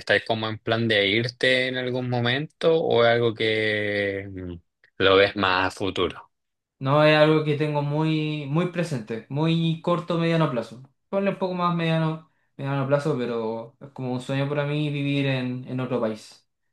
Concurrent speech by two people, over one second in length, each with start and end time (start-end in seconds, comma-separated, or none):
none